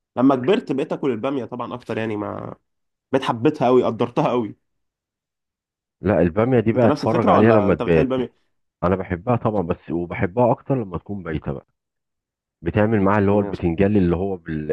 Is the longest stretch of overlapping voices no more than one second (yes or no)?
no